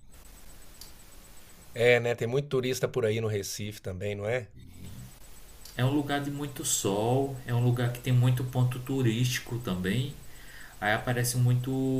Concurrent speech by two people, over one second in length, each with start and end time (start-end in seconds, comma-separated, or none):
none